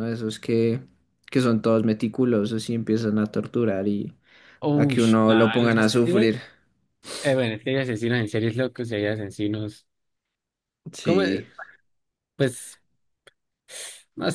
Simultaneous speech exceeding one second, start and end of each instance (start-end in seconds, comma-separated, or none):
4.7-6.3